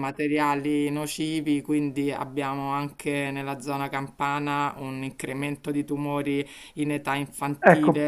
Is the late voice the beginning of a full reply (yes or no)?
no